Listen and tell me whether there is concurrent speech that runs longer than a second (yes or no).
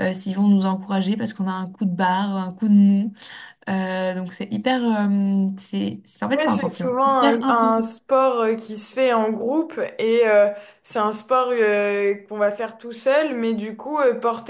yes